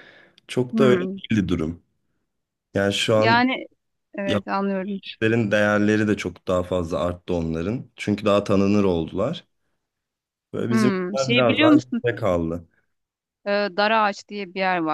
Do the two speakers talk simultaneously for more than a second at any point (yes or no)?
yes